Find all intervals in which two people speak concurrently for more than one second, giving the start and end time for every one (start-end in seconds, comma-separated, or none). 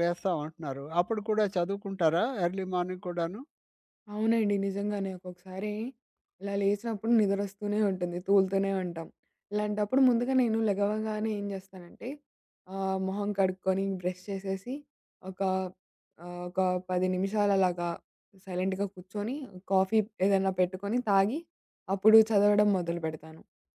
none